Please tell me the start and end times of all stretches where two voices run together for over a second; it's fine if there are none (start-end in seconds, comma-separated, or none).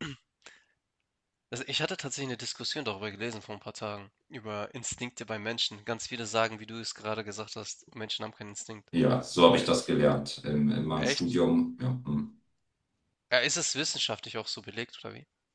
none